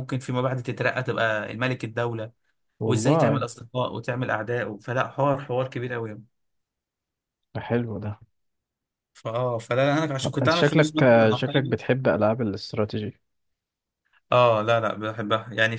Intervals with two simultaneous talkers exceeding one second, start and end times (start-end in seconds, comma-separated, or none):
10.4-11.8